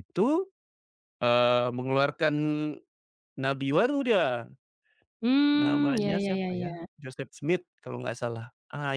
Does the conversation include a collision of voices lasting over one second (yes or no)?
yes